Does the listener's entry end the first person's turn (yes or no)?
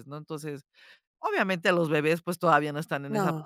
no